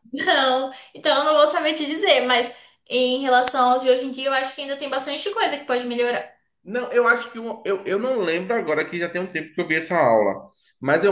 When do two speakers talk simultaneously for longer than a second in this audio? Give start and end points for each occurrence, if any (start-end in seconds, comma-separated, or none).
none